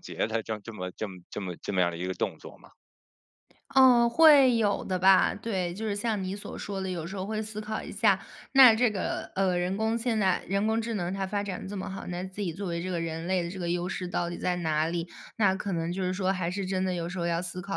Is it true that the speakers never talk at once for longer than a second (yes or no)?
yes